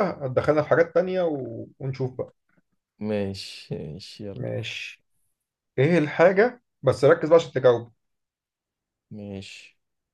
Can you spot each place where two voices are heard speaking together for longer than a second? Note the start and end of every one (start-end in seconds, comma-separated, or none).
none